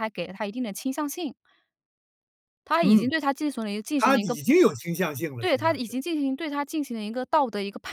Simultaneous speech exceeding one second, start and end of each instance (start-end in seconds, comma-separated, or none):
none